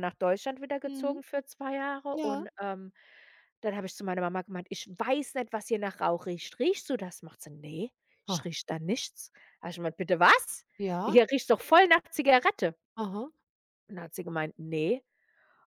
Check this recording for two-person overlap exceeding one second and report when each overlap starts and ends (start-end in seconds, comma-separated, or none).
none